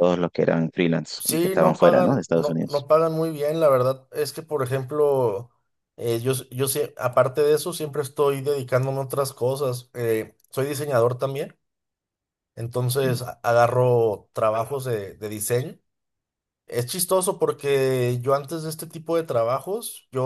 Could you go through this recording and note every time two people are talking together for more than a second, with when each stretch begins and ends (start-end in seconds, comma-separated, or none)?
1.2-2.9